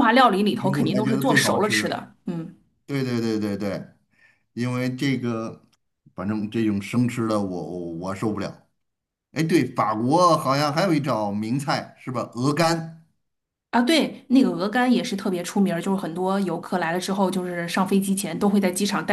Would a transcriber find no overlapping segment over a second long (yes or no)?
no